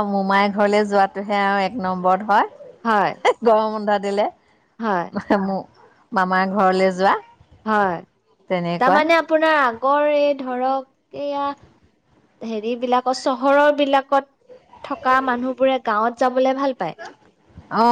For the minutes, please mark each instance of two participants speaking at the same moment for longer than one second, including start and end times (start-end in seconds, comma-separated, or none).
none